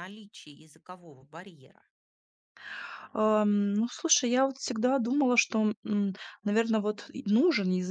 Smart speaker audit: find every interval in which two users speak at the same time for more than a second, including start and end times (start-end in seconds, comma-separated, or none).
none